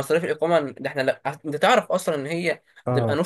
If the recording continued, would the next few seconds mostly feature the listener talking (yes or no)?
no